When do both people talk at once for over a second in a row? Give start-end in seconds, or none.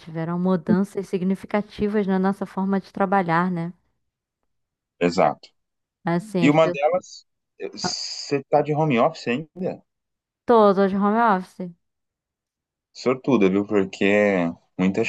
none